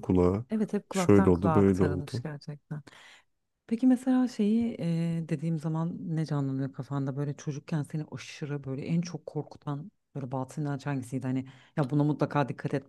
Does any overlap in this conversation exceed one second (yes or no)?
yes